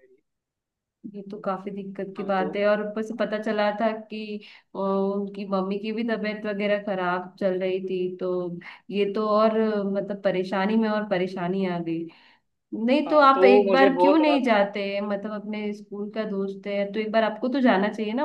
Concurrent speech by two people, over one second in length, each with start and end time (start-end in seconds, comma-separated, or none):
13.1-14.5